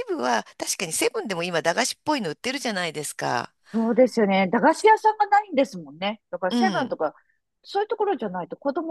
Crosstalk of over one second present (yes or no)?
no